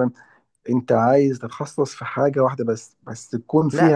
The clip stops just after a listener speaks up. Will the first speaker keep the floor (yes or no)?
no